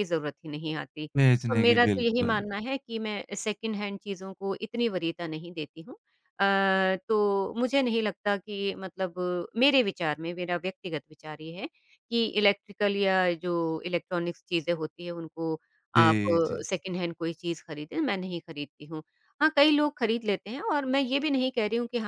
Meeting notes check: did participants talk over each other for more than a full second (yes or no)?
yes